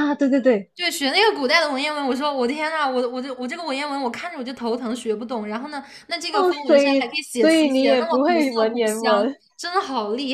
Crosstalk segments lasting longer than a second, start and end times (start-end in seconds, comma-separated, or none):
6.3-9.4